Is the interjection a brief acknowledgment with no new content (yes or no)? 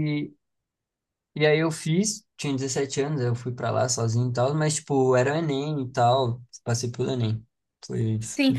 no